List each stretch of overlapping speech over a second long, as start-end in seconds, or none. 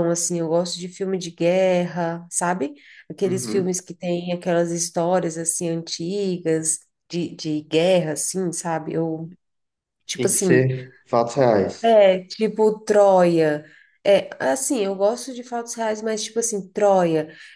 none